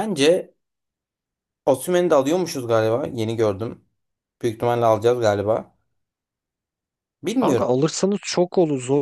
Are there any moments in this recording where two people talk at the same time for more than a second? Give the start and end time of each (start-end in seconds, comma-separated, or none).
none